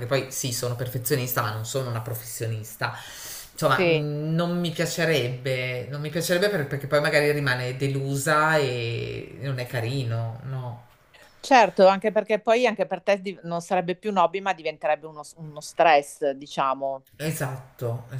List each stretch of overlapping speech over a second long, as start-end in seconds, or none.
none